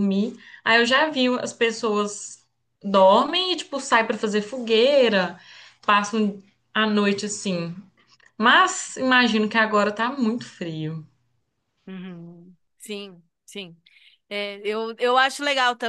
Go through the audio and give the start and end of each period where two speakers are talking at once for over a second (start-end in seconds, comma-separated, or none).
none